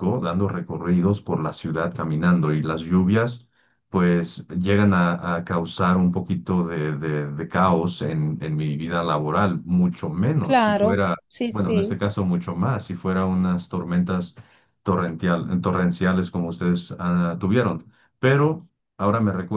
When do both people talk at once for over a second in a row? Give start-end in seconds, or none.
10.4-12.0